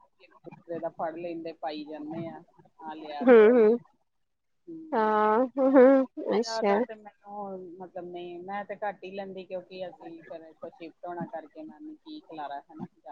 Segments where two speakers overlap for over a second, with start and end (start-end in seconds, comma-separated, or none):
none